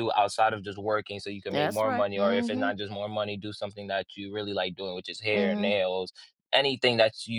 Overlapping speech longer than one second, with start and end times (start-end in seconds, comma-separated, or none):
1.5-2.8